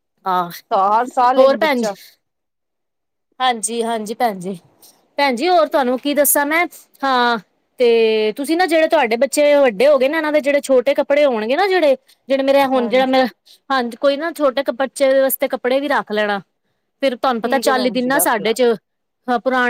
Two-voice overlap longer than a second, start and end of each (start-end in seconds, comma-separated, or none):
17.3-18.6